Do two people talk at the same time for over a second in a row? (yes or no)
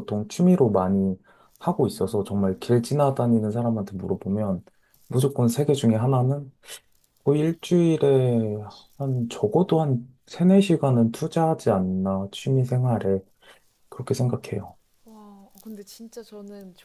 yes